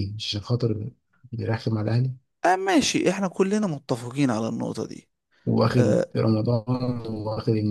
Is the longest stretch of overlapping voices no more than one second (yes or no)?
yes